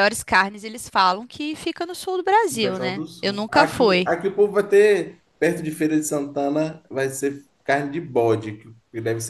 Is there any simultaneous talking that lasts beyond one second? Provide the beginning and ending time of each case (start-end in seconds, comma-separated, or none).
2.5-4.1